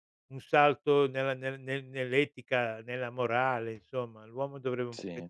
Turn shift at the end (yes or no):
no